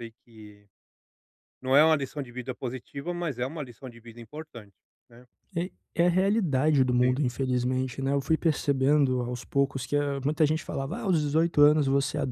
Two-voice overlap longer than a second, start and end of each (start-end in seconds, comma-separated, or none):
none